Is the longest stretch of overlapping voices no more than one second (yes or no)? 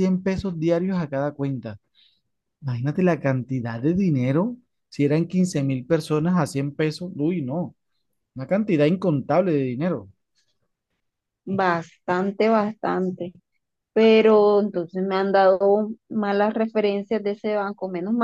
yes